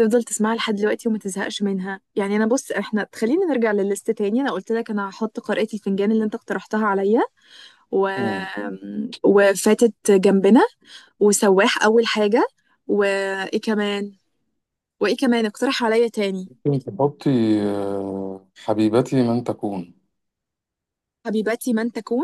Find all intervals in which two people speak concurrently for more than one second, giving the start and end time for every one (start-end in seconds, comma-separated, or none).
none